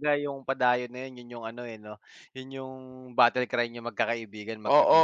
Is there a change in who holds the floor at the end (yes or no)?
yes